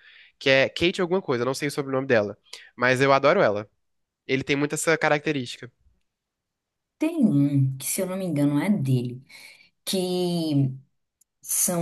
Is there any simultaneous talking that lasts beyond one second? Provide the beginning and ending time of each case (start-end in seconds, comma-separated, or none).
none